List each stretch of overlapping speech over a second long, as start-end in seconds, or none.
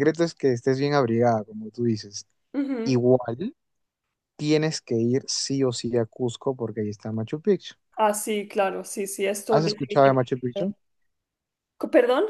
9.5-10.7